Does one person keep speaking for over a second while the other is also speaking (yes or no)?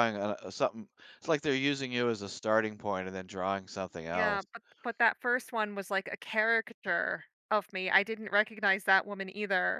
no